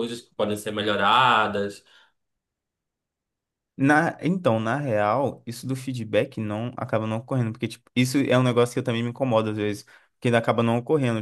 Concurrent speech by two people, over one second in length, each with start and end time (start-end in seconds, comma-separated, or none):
none